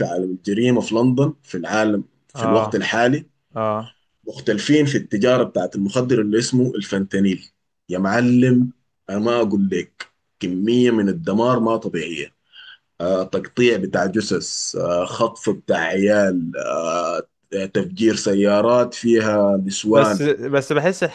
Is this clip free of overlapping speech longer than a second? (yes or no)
yes